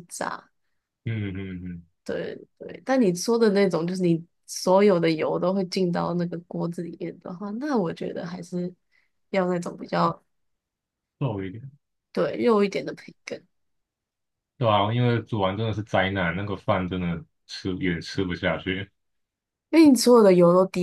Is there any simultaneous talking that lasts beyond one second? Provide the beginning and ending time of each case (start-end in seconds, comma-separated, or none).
none